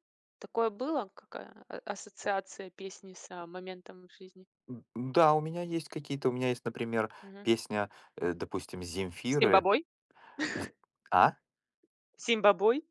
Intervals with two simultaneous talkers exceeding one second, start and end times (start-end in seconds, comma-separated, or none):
none